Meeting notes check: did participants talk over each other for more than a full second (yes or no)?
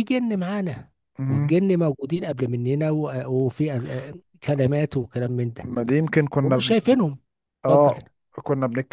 no